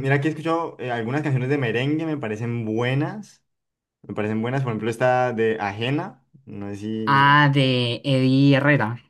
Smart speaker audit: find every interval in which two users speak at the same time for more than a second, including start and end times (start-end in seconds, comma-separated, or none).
none